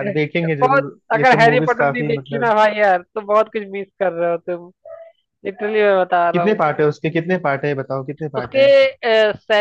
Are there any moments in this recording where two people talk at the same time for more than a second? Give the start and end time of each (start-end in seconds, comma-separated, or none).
0.6-2.5